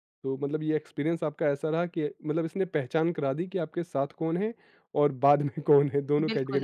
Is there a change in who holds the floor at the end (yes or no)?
yes